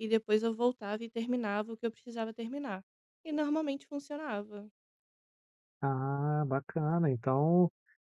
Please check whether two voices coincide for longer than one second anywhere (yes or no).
no